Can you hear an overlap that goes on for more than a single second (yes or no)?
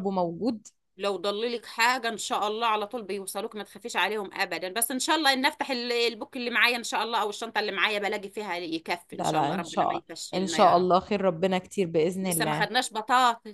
yes